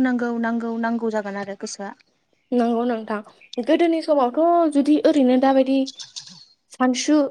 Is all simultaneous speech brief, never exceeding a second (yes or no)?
yes